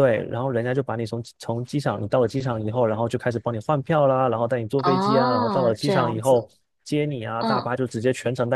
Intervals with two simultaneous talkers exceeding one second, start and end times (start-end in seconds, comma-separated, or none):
4.8-6.5